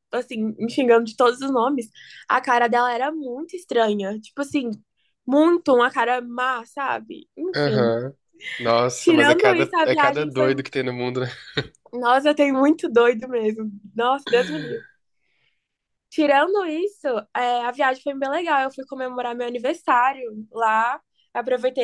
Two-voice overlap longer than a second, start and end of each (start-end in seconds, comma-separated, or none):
9.0-10.5